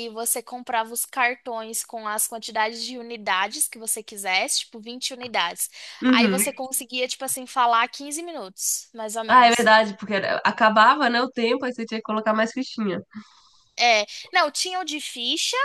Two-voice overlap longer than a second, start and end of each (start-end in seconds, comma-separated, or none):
none